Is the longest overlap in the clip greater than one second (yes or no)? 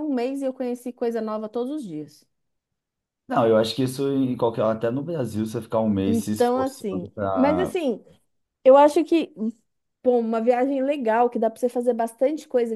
yes